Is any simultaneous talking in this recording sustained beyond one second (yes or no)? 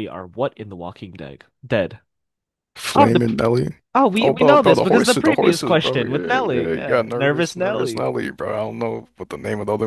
yes